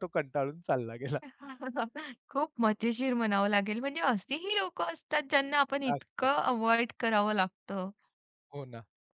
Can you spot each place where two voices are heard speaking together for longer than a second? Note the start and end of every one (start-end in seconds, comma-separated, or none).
none